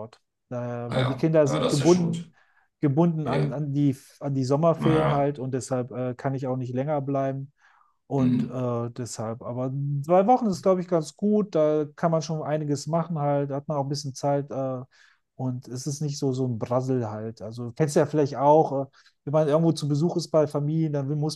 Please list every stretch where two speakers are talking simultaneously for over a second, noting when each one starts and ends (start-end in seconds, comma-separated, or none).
0.9-2.3